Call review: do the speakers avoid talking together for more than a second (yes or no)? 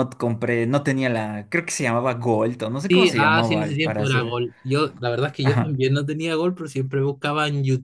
no